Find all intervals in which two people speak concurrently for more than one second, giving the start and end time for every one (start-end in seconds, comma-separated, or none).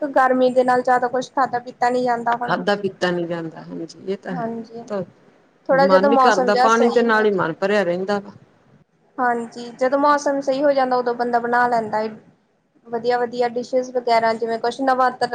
5.8-7.5